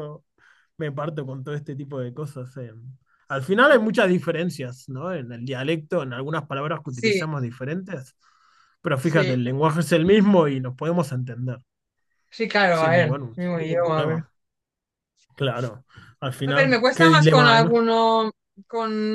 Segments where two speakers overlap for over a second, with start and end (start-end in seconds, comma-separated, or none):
12.7-14.2, 16.4-17.8